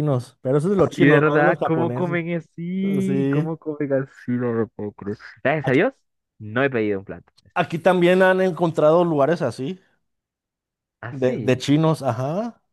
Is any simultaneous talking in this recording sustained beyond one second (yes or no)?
yes